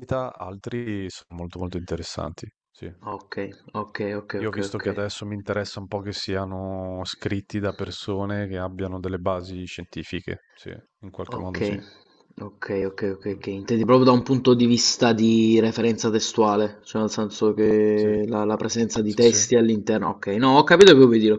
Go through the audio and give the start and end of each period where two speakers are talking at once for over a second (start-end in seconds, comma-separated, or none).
none